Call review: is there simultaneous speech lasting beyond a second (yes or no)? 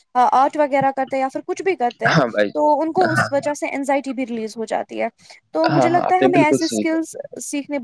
yes